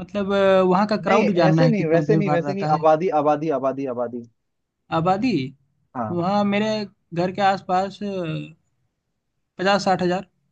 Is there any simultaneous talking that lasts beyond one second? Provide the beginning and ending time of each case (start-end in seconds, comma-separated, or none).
1.1-2.8